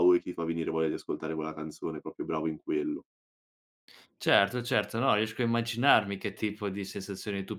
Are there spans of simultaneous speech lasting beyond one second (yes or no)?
no